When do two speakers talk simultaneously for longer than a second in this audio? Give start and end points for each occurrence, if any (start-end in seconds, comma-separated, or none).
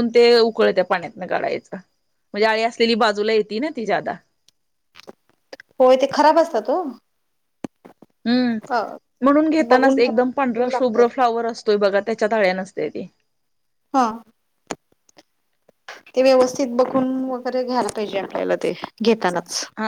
9.7-11.0